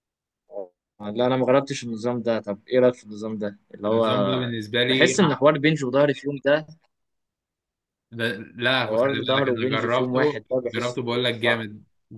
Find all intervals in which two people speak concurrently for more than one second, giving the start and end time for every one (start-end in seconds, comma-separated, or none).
8.9-11.7